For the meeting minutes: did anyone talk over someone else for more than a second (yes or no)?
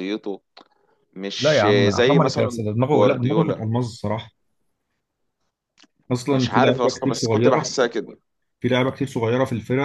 yes